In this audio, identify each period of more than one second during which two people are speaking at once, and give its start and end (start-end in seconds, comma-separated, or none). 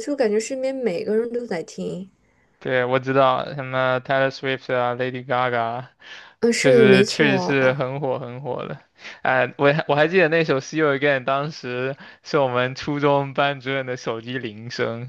6.6-7.8